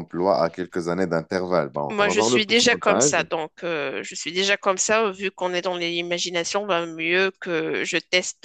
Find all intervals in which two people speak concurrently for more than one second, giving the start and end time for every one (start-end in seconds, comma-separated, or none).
1.9-3.2